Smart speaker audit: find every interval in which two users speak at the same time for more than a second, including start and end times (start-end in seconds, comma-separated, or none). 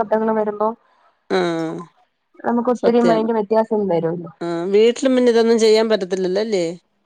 none